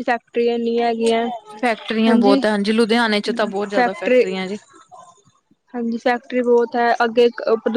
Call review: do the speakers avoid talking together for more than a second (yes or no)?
yes